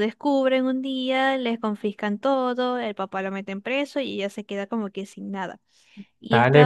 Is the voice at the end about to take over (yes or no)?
yes